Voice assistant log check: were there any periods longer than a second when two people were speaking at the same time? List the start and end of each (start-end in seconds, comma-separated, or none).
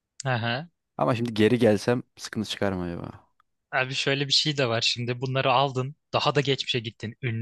none